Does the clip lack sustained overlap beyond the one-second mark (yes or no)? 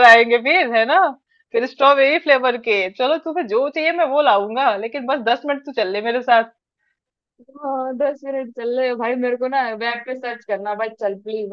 yes